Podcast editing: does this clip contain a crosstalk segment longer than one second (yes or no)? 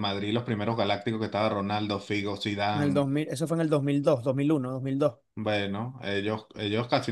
no